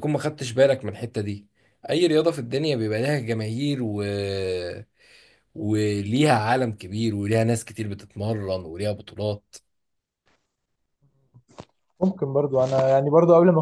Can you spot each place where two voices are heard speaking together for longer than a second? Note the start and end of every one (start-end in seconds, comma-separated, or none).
none